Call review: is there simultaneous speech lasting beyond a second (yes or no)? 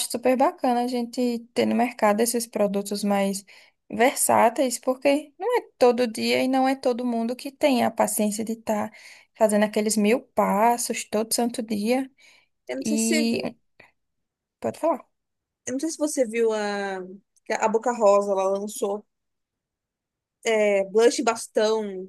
no